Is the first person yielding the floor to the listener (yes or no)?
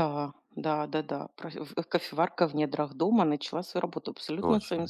yes